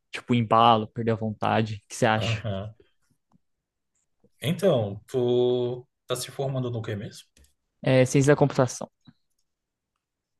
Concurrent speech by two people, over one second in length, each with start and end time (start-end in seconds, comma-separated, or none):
none